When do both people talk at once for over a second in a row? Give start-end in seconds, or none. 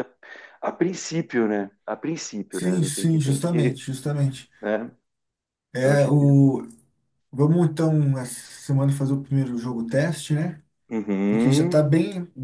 2.5-3.8